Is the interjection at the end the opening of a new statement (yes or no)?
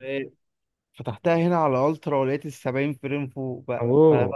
no